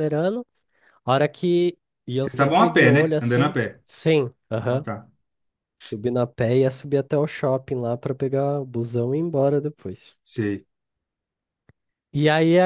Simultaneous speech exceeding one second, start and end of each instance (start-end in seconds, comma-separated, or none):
2.2-3.8